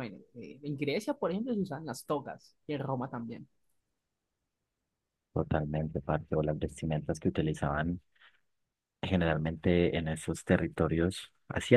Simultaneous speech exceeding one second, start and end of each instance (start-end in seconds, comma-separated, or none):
none